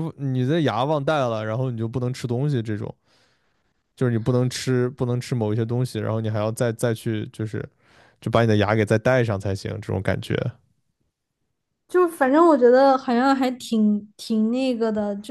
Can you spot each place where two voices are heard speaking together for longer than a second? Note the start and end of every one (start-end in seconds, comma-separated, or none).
none